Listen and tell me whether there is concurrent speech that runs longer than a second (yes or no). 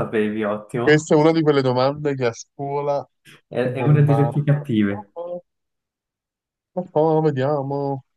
yes